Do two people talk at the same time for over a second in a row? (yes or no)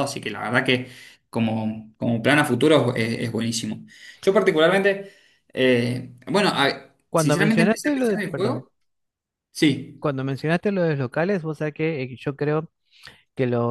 yes